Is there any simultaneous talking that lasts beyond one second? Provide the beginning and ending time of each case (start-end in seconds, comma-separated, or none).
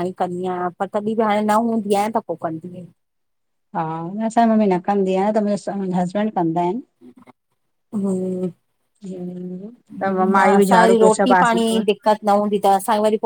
9.9-11.8